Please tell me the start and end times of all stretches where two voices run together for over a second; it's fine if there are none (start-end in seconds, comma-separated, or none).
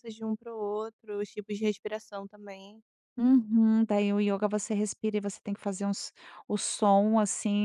none